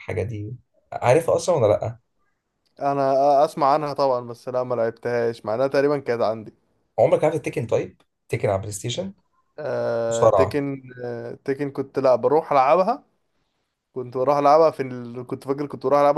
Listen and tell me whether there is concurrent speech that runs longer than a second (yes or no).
no